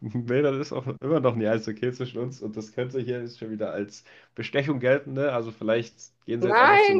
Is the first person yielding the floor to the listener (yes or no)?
yes